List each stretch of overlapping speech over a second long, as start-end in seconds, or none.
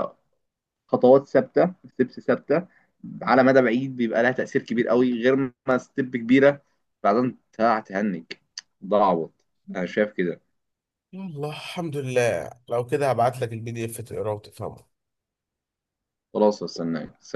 none